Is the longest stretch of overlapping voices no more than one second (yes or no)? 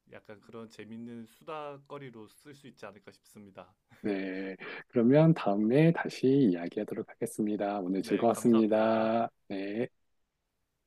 no